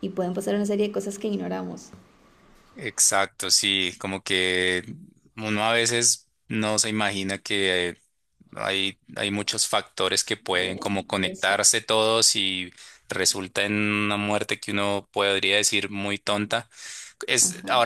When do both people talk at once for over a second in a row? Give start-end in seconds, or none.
none